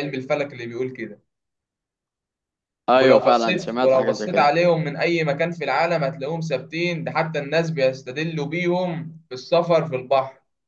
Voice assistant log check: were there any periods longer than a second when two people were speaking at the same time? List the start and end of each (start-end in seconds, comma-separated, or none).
2.9-4.5